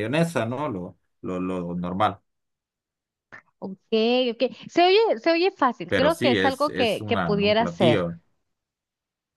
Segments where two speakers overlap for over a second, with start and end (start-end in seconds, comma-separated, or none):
5.9-8.1